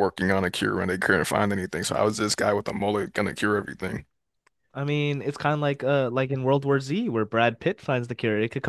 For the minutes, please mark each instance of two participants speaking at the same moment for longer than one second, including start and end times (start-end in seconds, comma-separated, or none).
none